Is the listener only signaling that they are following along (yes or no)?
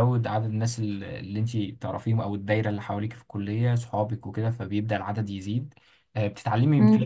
yes